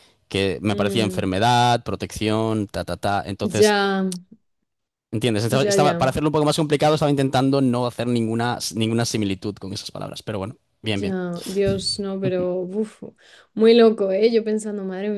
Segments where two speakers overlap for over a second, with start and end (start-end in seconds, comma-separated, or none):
none